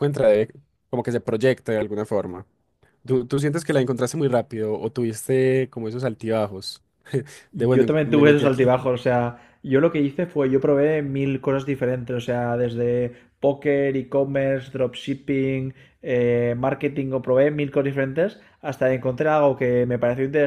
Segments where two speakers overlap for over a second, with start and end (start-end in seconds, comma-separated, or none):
7.6-8.8